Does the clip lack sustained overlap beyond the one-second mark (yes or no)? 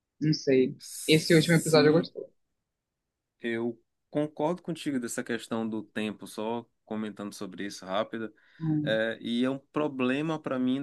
no